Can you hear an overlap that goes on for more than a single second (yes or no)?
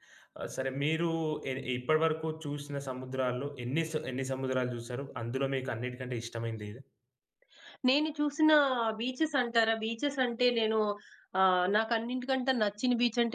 no